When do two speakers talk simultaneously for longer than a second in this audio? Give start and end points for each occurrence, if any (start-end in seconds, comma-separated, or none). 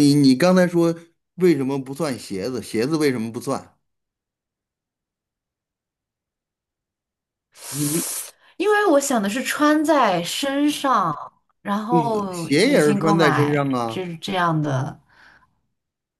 11.9-14.0